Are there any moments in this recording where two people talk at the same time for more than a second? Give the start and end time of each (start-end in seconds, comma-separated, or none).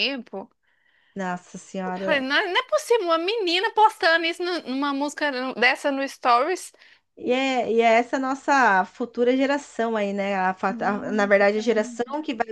10.7-11.9